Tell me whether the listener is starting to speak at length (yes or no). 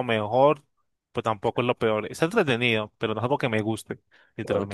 yes